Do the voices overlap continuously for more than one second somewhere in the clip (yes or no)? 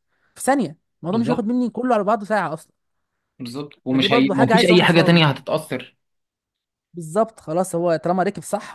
yes